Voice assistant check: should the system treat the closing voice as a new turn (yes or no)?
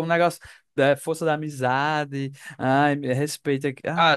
yes